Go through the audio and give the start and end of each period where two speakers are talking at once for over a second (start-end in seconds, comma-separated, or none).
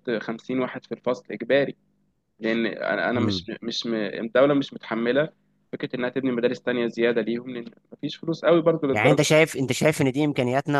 none